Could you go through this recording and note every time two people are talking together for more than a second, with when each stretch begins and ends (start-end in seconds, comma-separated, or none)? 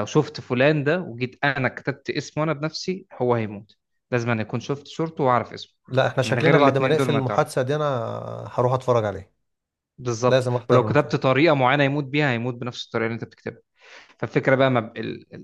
6.2-7.4